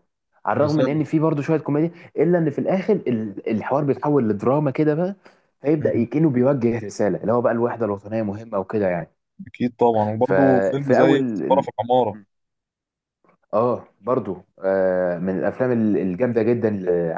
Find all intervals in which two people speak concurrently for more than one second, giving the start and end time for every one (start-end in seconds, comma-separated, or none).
10.2-11.7